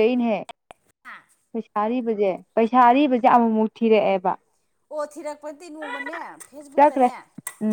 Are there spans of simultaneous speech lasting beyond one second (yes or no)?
no